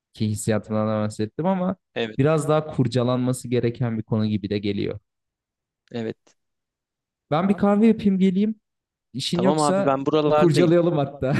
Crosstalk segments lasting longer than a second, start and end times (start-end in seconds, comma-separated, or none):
9.3-10.7